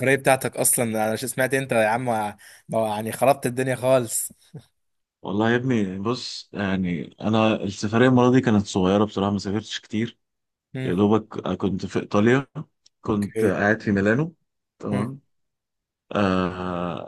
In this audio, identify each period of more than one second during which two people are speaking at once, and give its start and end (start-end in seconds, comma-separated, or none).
none